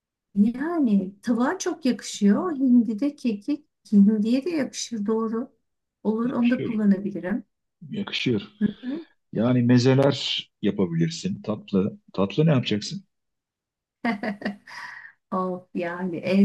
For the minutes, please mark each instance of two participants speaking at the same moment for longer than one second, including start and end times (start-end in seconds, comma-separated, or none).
none